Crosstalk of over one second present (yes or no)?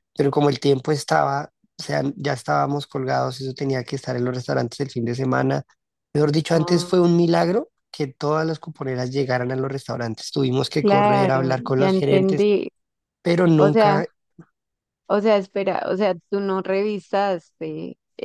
yes